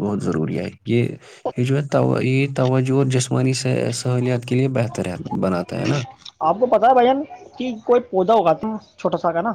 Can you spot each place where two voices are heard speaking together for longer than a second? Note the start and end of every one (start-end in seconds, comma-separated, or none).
none